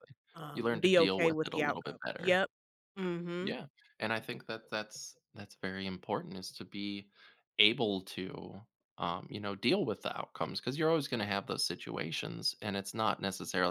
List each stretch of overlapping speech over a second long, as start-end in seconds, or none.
0.5-2.4